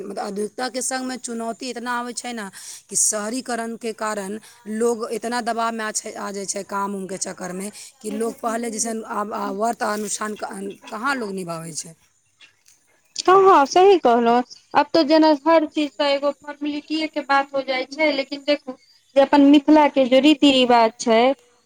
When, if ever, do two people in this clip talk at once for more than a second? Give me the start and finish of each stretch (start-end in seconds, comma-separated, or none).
none